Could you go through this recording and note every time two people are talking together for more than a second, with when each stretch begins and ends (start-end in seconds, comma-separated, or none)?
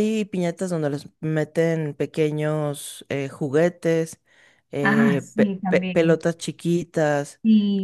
4.8-6.2